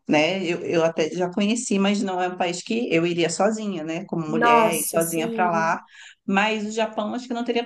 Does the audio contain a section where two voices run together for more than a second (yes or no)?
yes